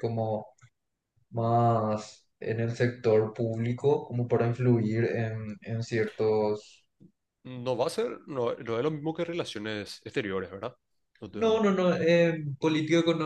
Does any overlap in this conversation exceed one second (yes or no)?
no